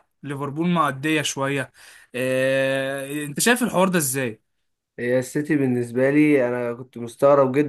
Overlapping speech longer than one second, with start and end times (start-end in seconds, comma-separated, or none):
none